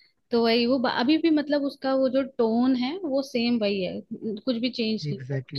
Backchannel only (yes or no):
no